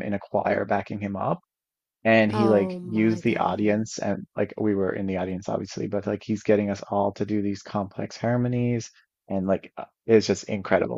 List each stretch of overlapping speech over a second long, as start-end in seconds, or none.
2.3-3.9